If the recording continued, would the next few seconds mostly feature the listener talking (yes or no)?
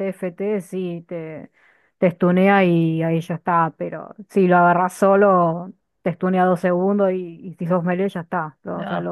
yes